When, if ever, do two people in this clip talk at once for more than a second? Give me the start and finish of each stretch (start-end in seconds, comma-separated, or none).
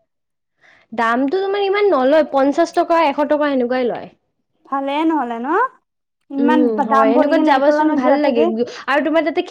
6.4-8.4